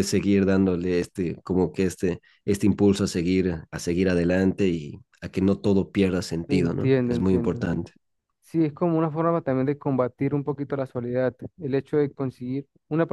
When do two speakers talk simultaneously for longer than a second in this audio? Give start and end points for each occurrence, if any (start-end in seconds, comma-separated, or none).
6.5-7.7